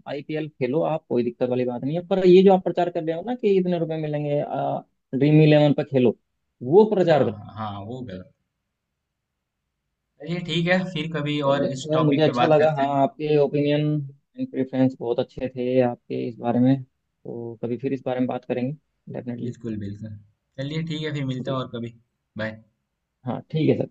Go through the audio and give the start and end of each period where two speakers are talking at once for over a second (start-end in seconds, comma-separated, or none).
11.5-12.9